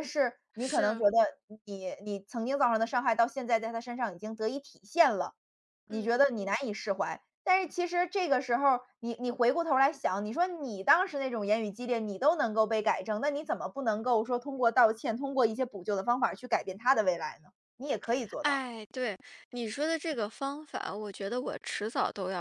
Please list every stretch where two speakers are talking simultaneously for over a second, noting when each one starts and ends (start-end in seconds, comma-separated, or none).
none